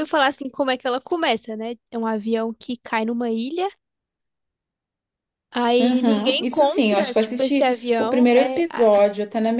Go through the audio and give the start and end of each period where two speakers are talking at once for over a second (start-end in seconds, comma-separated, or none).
5.8-8.9